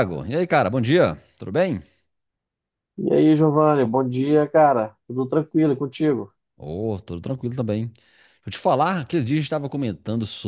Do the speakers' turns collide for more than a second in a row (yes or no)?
no